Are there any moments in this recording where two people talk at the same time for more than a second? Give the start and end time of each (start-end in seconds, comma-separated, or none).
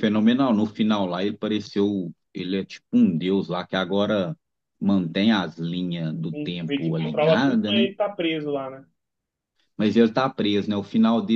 6.3-7.9